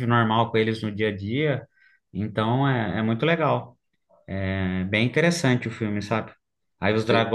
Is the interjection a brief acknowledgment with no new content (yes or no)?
yes